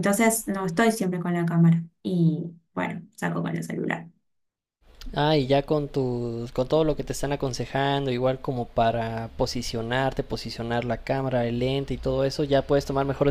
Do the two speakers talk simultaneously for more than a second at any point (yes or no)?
no